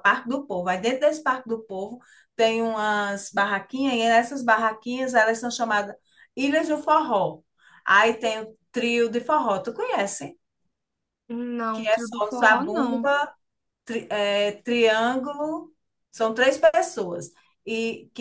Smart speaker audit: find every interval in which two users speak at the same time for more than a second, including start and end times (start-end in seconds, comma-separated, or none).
11.7-13.1